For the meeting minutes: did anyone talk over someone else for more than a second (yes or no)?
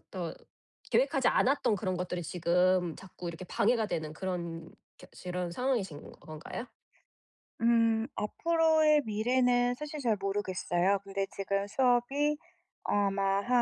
no